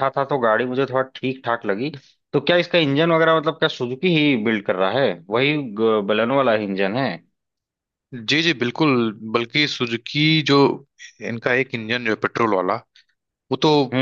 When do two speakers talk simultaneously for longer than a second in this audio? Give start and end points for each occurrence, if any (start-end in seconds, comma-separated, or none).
none